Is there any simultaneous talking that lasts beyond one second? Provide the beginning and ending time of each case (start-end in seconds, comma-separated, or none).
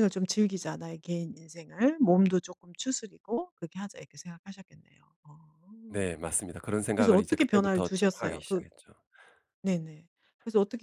6.9-8.6